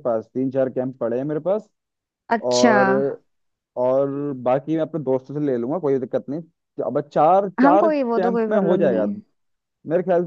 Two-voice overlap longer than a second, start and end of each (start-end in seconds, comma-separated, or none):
7.6-9.1